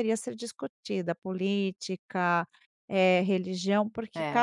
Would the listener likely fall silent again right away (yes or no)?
yes